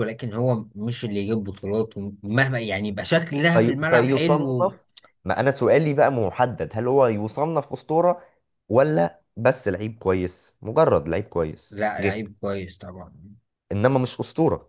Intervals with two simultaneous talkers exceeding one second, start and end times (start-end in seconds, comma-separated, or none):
3.5-4.7